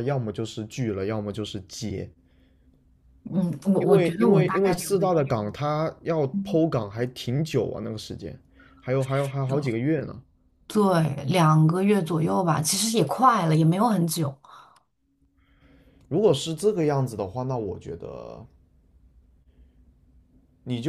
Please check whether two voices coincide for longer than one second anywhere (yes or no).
yes